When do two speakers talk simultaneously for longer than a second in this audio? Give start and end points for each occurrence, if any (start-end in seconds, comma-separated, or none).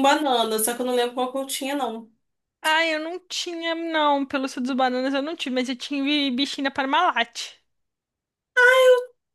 none